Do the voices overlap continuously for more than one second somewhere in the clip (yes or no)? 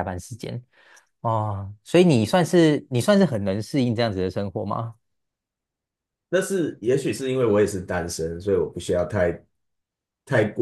no